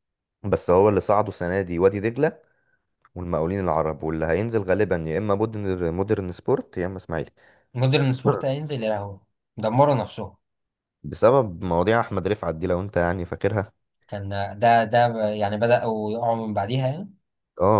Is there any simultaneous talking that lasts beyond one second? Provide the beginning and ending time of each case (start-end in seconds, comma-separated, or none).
none